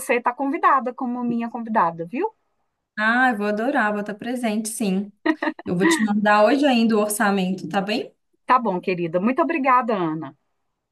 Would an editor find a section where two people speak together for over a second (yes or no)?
no